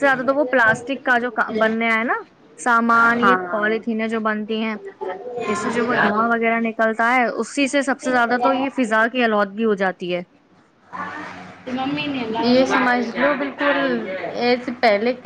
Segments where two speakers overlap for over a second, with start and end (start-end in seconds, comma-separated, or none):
none